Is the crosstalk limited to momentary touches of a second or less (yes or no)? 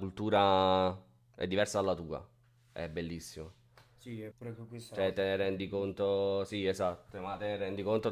no